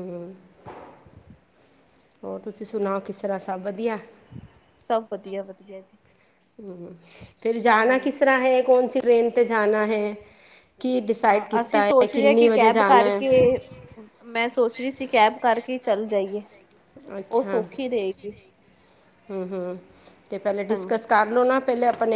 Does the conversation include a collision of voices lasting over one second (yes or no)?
yes